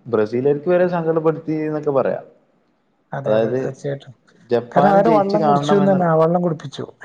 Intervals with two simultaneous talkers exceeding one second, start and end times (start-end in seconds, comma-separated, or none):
4.7-6.1